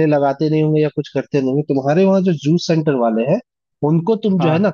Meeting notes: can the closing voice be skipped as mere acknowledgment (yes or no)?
yes